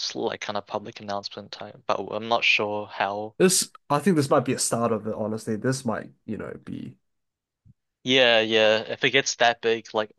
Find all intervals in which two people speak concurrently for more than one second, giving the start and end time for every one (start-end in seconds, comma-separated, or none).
none